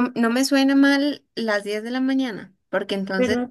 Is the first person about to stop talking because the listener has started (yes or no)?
no